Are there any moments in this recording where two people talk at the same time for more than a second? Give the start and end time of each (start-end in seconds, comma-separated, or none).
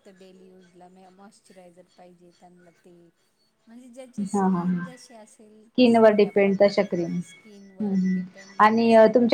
5.7-8.2